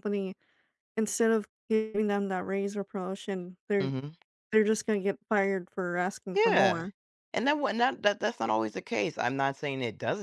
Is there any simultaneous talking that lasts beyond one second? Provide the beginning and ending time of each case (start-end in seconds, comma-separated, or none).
none